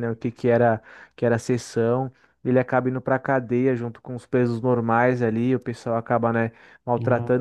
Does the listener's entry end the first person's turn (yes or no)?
no